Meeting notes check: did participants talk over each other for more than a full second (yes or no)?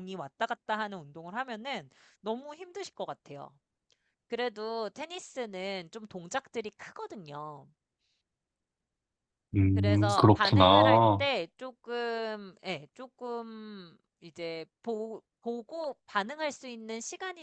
yes